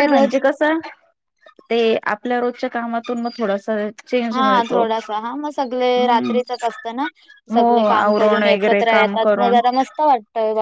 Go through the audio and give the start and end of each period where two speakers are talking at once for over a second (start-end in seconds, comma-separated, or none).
4.3-6.3, 7.5-9.6